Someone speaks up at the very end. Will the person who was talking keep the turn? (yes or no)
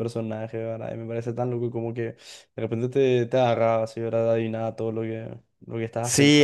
no